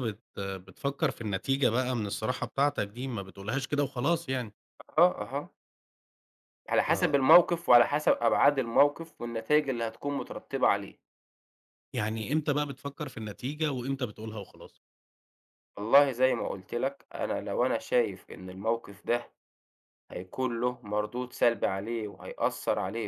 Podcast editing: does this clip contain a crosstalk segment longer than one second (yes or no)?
no